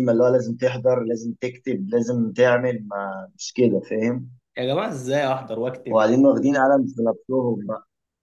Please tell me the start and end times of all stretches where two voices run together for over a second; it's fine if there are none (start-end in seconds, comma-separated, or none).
none